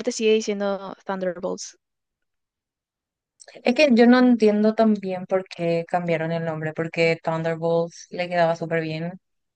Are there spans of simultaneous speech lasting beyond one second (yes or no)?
no